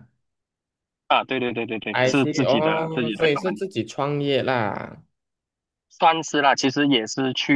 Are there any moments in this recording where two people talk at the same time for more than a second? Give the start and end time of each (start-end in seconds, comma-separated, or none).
1.9-3.6